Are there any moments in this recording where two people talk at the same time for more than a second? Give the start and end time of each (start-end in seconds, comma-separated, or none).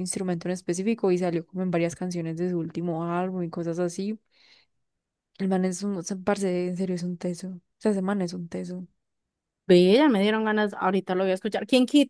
none